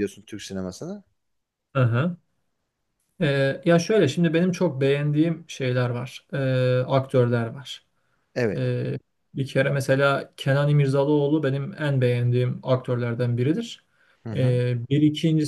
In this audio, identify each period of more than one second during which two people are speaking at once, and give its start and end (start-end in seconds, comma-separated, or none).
none